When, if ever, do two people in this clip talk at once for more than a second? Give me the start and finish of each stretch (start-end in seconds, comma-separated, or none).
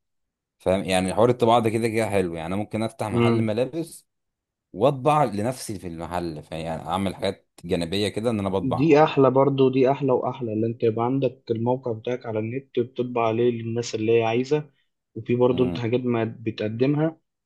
none